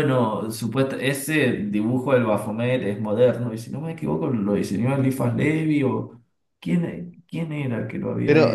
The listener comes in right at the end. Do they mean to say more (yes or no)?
yes